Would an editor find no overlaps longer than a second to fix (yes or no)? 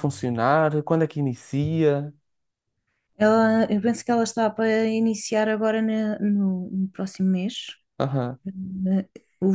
yes